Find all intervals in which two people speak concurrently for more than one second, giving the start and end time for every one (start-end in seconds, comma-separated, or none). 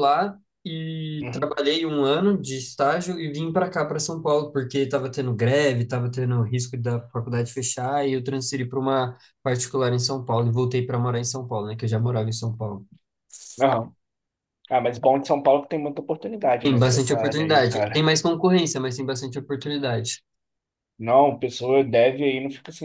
16.6-18.1